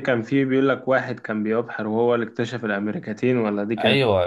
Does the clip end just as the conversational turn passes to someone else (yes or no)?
yes